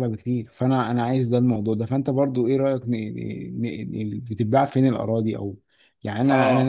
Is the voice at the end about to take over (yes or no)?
yes